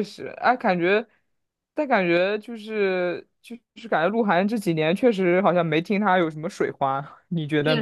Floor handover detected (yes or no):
yes